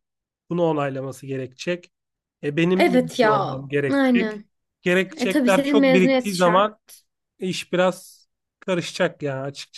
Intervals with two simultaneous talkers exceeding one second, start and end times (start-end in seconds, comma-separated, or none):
2.7-4.4, 5.2-6.7